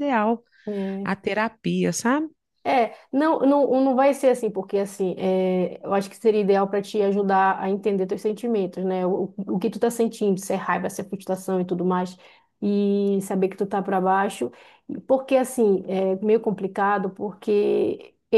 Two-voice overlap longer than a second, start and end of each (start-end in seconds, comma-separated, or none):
none